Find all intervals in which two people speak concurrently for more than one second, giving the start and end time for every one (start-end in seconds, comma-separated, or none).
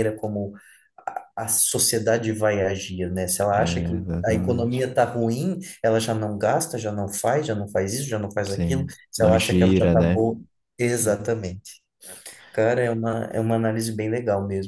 3.5-4.9, 8.5-10.3